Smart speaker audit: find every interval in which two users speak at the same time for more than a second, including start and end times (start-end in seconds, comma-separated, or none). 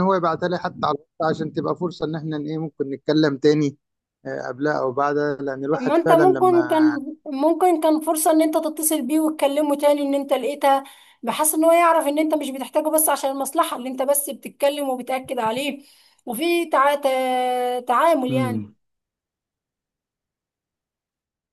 5.7-7.0